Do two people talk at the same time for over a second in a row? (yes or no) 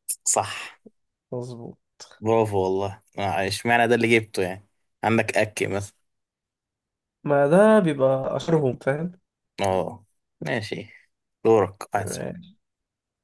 no